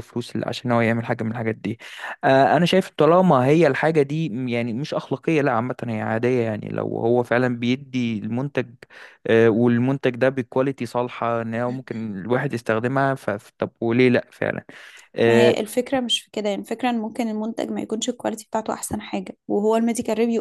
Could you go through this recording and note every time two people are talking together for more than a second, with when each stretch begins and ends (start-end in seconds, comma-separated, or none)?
none